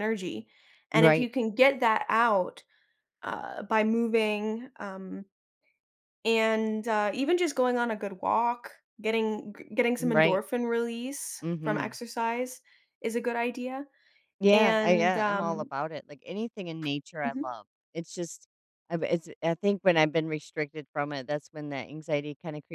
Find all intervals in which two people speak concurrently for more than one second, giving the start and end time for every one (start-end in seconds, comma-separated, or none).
14.5-15.7